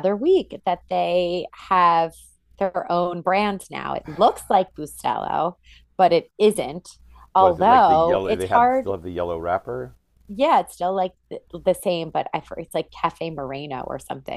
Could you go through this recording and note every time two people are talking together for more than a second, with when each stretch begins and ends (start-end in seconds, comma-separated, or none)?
7.4-8.9